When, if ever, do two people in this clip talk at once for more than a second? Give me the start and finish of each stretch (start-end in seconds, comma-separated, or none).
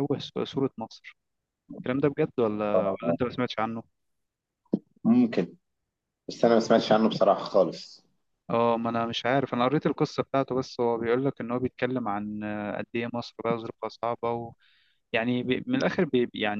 none